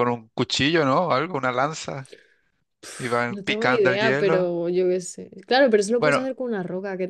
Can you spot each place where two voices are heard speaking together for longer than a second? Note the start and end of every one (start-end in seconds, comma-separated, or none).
3.0-4.5